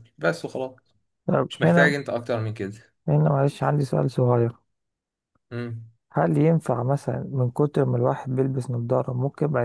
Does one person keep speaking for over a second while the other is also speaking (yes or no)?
no